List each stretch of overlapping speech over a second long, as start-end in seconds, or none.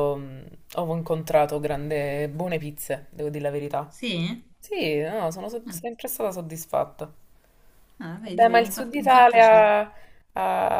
8.2-9.7